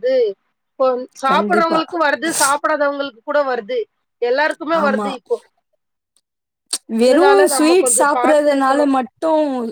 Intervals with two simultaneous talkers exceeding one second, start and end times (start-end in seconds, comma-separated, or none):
7.0-8.9